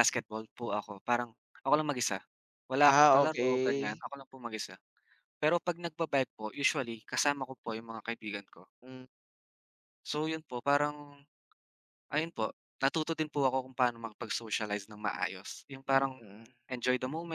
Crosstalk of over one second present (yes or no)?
yes